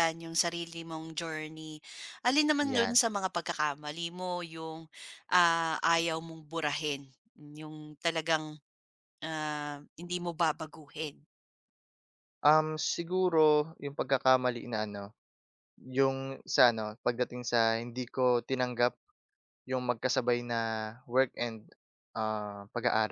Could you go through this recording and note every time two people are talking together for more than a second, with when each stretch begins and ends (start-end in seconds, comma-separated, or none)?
none